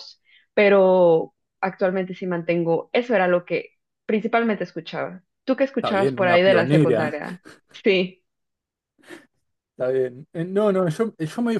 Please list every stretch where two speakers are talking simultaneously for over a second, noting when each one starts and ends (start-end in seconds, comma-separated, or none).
5.8-7.2